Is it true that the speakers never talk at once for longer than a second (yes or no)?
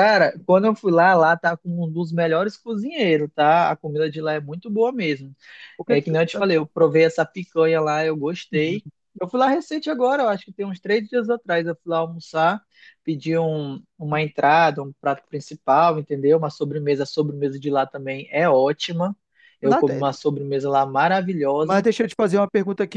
yes